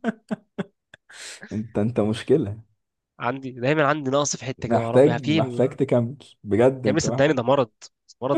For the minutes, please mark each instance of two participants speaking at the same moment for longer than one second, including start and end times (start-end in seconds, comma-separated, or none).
4.6-5.8